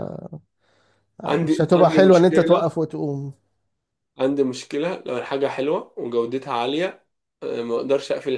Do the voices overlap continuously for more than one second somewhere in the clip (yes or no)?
yes